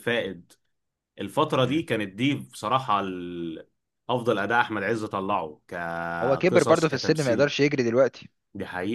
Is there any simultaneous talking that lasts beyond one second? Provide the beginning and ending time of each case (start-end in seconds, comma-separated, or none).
6.2-7.5